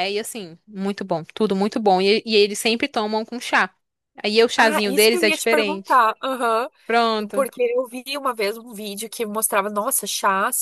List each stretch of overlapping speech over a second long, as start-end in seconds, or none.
4.6-6.0